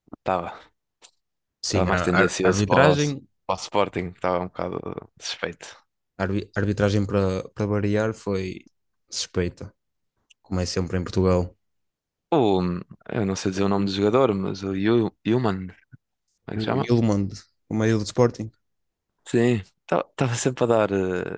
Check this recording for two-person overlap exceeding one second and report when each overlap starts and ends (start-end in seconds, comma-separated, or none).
1.7-3.0